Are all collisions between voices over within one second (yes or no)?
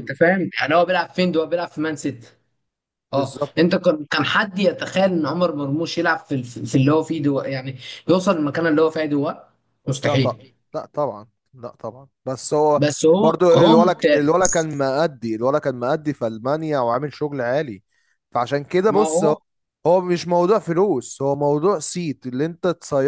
no